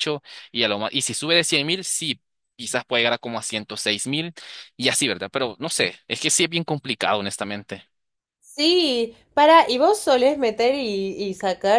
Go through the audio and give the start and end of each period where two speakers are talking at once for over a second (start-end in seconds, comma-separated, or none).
none